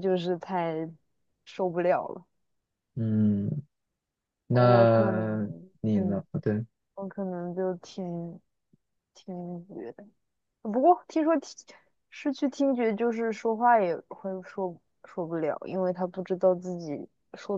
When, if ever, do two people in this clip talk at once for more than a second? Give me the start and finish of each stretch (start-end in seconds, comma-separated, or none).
4.5-6.2